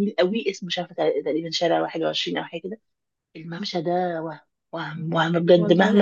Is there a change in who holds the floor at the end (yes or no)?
yes